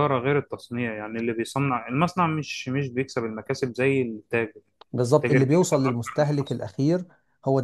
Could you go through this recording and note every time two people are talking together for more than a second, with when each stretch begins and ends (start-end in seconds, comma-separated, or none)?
5.2-6.7